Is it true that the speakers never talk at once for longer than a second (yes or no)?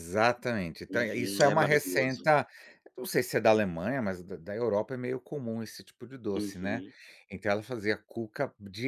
no